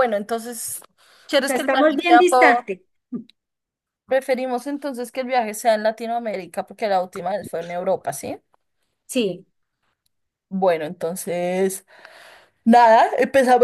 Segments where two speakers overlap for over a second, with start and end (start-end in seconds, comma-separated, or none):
1.4-2.6